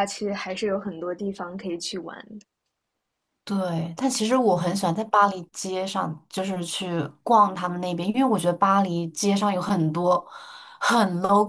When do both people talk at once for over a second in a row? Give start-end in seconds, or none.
none